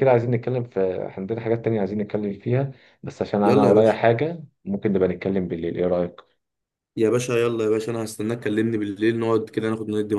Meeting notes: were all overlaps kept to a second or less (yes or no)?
yes